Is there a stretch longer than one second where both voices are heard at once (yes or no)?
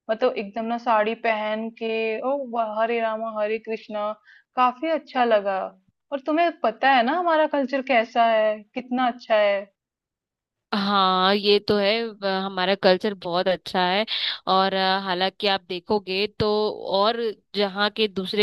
no